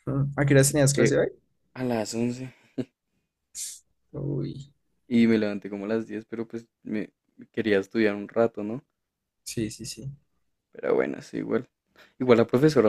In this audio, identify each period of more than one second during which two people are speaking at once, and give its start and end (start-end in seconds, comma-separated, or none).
none